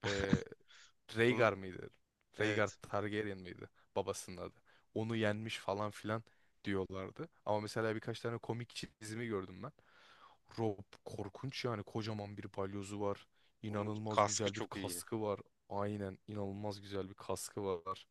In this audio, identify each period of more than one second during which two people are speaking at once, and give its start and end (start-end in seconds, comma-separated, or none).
13.7-15.0